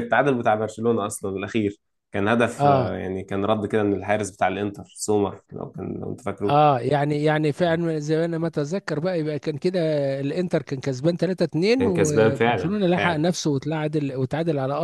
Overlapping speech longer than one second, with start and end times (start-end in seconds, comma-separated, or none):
11.7-13.3